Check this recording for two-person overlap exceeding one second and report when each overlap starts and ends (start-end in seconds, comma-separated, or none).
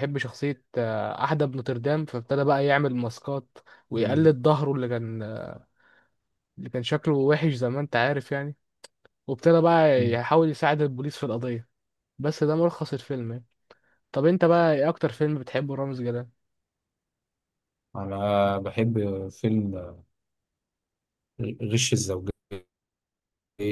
none